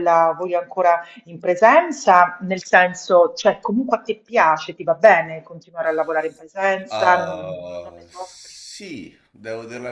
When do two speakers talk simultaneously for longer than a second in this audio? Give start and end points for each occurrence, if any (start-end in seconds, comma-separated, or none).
6.9-8.5